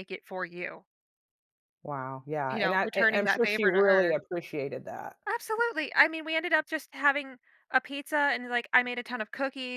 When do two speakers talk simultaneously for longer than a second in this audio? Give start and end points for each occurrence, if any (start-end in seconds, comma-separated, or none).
2.5-4.2